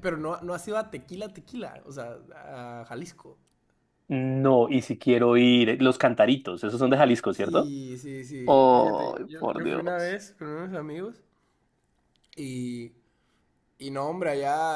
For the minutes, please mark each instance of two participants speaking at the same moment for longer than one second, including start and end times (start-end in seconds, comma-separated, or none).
8.4-10.2